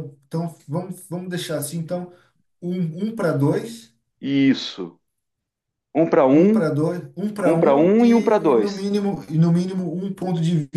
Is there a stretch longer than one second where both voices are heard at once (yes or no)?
yes